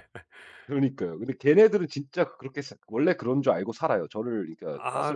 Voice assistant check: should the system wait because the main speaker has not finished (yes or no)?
no